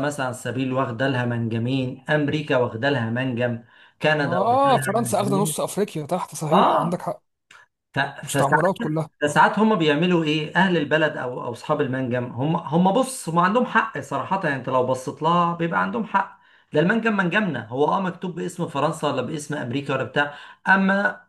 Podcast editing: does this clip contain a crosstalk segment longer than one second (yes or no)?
yes